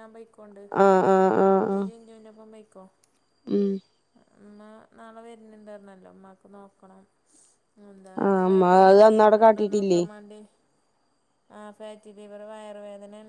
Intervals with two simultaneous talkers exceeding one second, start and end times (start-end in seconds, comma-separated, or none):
8.2-10.0